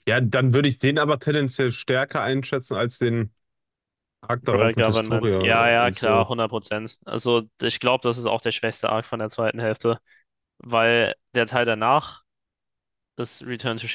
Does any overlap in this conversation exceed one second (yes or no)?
yes